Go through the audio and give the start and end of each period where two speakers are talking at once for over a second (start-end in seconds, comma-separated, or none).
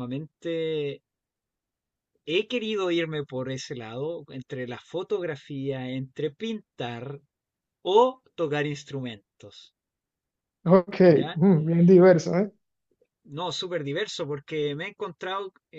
none